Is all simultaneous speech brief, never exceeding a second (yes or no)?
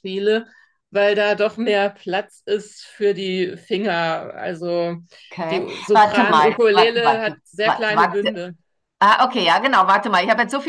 no